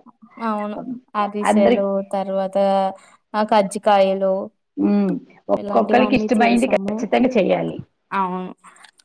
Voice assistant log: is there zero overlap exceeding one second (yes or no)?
no